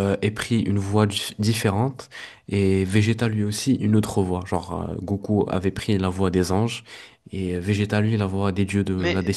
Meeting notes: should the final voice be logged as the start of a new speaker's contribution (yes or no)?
no